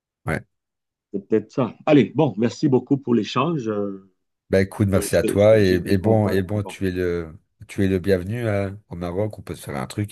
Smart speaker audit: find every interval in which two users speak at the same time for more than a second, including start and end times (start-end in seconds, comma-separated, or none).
4.9-6.8